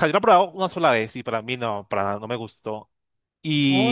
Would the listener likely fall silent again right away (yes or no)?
no